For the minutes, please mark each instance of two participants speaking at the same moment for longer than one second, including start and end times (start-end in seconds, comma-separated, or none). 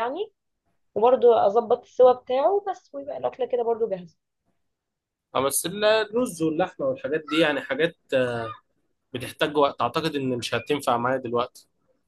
none